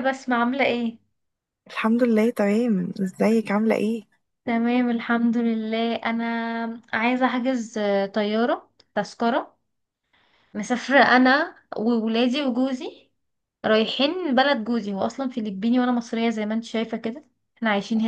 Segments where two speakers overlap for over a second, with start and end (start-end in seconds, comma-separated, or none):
none